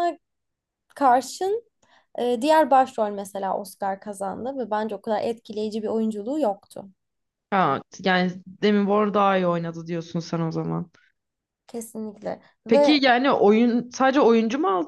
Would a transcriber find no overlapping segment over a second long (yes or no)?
yes